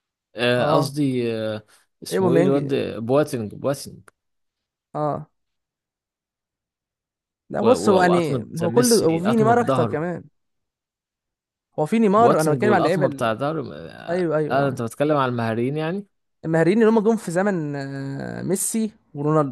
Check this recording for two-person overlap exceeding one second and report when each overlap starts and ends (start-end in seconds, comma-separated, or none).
7.6-10.0, 12.2-13.4